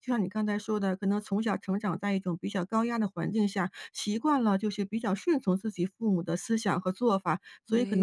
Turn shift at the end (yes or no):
no